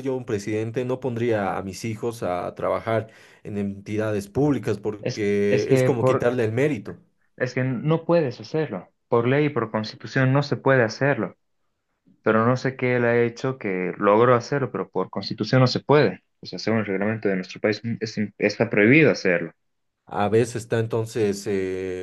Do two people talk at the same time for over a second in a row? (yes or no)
yes